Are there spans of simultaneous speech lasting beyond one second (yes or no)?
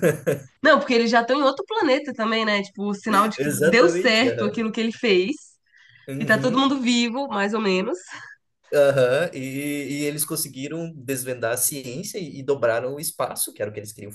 yes